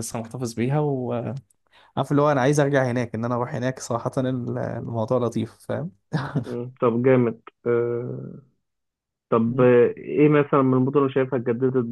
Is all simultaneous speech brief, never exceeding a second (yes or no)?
yes